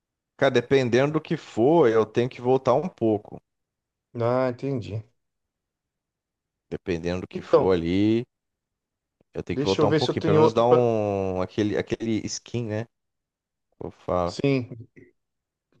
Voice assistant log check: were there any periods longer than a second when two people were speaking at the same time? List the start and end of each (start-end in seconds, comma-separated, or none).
9.5-10.8